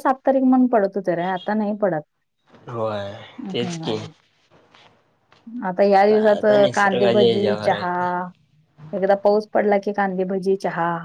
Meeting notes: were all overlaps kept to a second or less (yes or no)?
no